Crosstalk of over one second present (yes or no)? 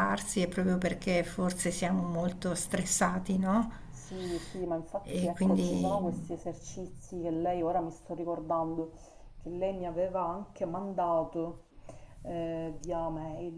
no